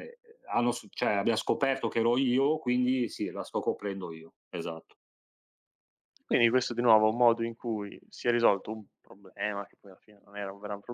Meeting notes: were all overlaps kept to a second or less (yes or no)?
yes